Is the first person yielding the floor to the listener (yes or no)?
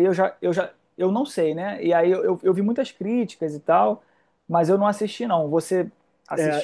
yes